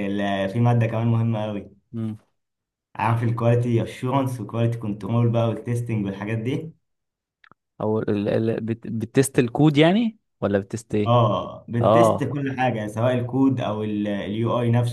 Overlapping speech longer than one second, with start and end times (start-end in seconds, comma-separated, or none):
none